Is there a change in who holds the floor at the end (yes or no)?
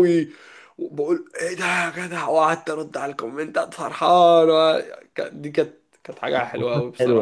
yes